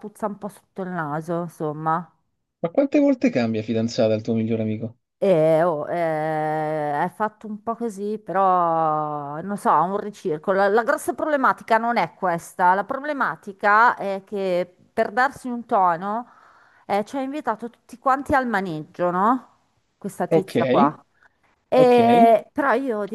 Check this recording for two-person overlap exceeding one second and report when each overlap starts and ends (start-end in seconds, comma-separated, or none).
none